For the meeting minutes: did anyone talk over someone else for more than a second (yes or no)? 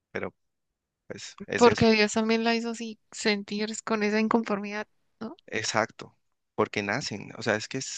no